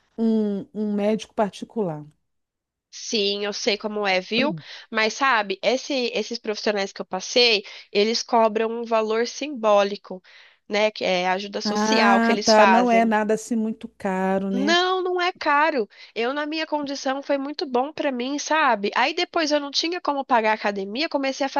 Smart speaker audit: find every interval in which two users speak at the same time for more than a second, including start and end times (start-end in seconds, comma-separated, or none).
11.6-13.1